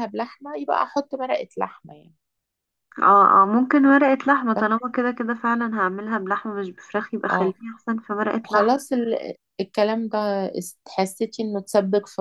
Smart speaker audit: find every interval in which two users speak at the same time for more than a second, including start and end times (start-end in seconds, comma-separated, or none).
none